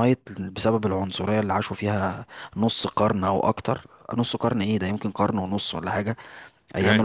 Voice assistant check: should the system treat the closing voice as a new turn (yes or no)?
no